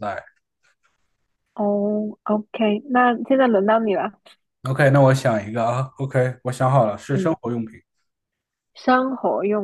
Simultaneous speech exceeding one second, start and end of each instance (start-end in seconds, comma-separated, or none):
none